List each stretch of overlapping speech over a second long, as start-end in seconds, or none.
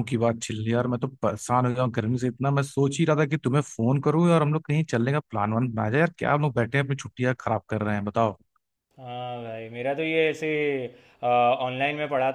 none